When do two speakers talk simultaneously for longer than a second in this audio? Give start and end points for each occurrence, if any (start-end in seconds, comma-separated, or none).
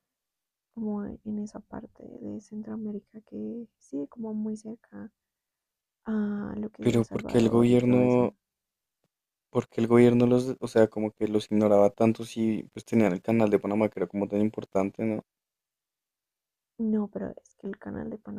6.8-8.3